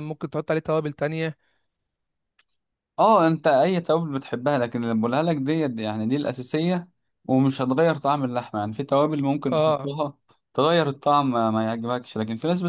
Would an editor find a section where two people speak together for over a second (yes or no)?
no